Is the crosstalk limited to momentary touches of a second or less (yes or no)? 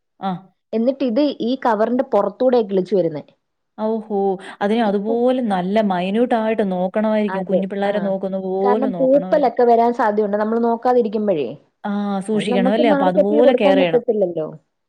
no